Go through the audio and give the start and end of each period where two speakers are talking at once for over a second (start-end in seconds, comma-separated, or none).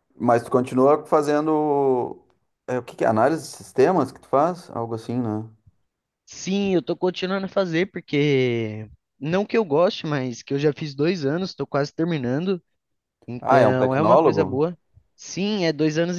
13.4-14.6